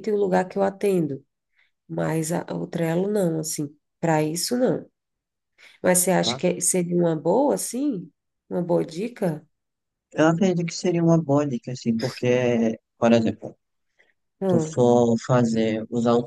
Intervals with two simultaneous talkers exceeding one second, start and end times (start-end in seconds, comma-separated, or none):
none